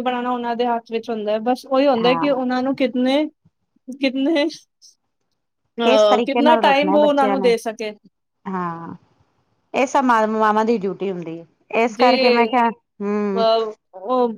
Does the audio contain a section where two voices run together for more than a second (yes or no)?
yes